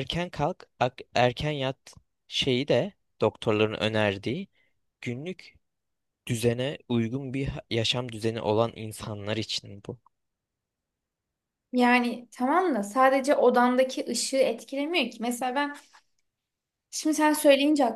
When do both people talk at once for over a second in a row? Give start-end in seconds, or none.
none